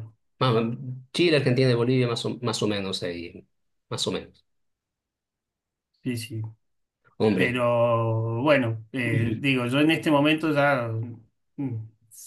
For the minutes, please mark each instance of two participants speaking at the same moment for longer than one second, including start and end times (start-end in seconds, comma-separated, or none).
none